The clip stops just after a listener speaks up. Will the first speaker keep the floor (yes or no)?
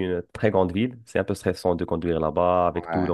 yes